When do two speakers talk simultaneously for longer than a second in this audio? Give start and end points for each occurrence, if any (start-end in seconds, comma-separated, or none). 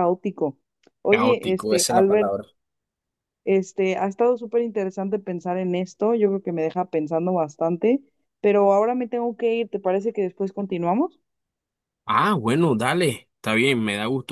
1.1-2.3